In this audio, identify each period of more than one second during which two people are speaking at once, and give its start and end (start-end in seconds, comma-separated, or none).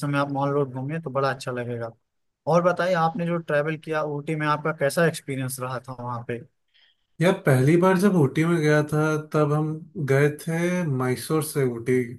none